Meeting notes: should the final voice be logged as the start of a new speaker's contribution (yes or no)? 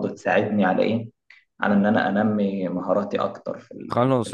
yes